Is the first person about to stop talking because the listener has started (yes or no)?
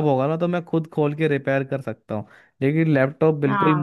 no